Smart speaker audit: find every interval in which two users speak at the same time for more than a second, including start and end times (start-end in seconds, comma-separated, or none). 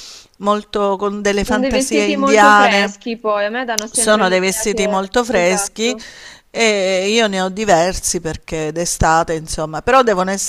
1.4-2.9, 3.9-6.0